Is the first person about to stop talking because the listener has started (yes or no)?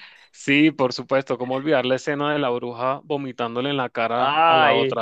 yes